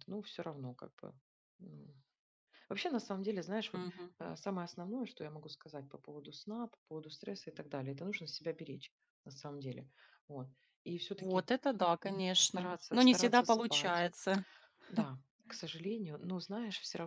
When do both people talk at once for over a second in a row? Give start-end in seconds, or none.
12.4-14.1